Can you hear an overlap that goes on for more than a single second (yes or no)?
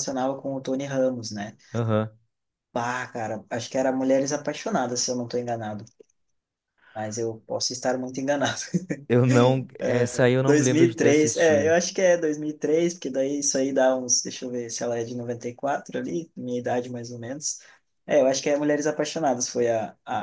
yes